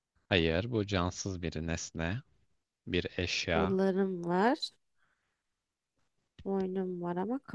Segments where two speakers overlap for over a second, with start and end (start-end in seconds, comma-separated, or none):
none